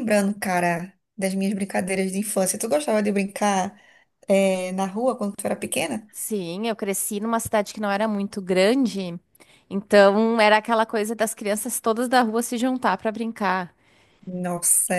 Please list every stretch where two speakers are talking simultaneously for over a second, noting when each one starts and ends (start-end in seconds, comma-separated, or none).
none